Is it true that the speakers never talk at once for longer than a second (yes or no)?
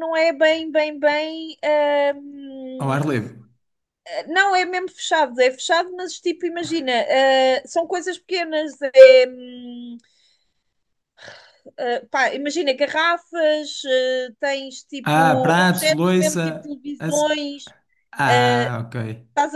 no